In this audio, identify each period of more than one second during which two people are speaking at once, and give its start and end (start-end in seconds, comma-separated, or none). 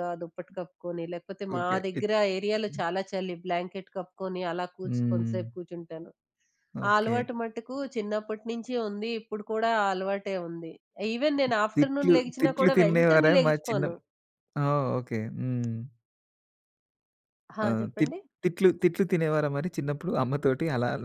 11.8-13.8